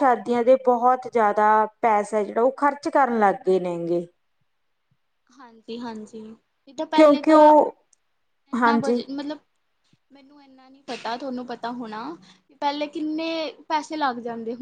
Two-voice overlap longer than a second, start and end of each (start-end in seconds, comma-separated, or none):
none